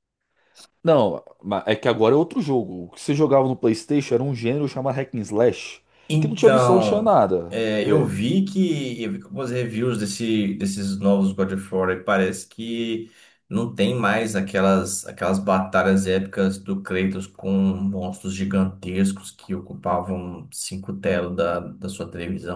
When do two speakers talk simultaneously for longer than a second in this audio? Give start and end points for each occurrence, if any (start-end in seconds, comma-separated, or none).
6.2-7.6